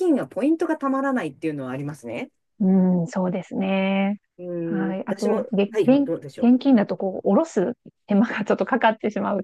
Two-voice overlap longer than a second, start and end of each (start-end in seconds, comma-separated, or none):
4.6-6.9